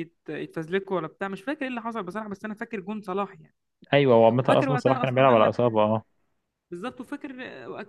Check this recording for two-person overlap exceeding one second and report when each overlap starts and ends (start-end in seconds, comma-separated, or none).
4.4-5.8